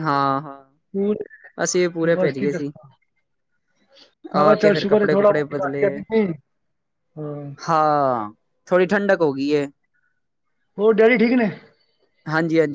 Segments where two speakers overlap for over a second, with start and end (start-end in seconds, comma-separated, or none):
4.4-5.8